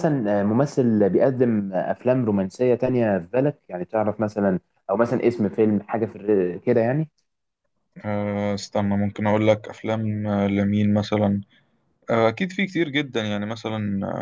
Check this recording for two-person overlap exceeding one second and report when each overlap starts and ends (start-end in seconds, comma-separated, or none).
none